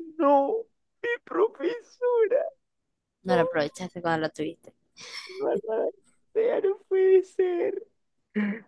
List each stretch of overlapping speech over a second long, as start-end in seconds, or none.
none